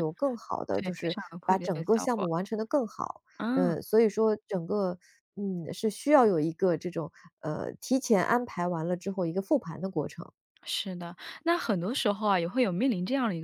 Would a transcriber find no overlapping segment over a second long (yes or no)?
no